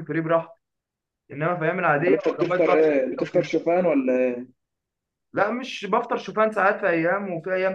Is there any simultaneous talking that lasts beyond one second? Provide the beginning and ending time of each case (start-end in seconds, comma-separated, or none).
2.0-3.5